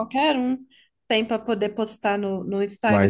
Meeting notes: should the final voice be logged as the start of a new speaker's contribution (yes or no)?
yes